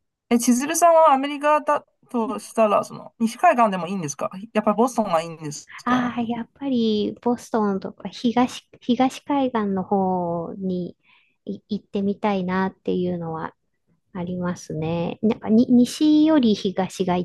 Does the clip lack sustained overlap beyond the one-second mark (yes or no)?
yes